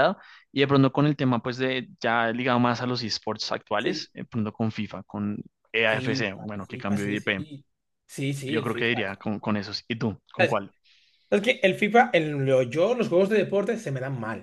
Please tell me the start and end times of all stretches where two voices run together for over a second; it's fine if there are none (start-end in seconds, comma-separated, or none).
5.9-7.5